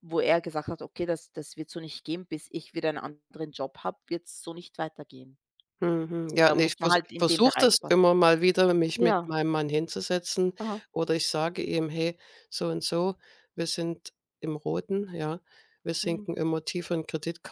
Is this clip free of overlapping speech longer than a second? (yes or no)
no